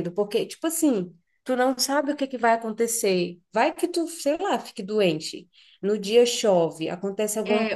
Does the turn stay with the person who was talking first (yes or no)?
no